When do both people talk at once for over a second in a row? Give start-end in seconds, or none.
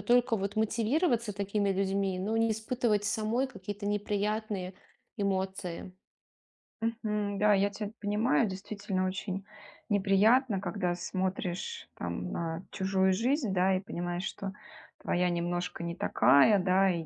none